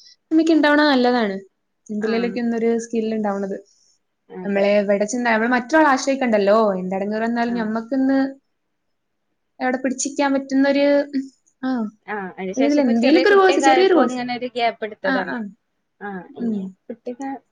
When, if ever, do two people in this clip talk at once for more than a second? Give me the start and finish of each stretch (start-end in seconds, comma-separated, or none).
12.7-14.2